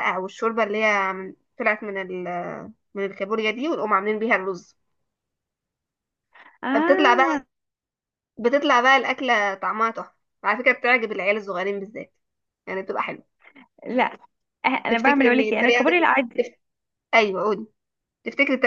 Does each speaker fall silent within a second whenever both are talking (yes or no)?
no